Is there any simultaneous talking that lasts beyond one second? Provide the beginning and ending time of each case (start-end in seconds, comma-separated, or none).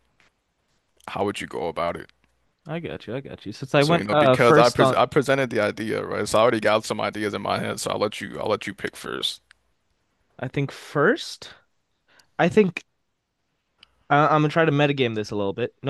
3.8-5.0